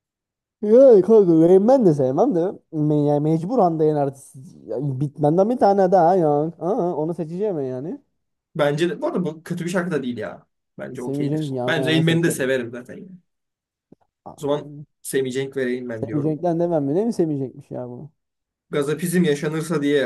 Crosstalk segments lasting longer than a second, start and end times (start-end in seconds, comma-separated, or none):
11.0-12.4